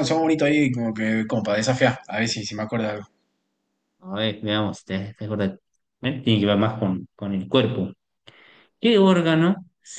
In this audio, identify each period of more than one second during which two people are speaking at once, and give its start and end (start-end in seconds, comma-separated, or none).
none